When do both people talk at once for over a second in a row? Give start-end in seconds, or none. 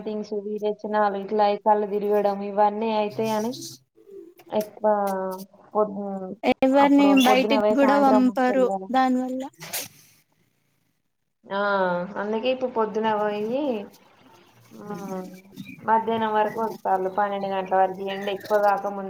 6.9-8.8